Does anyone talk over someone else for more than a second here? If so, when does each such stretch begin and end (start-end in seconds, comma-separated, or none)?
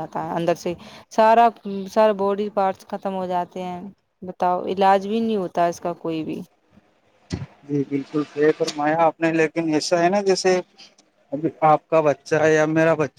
none